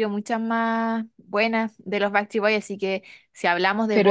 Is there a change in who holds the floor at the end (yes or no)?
no